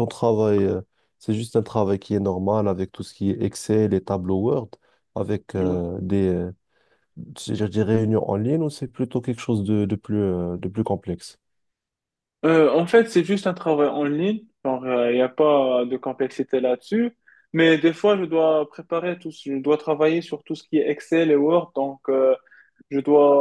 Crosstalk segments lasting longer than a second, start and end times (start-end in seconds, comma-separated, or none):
none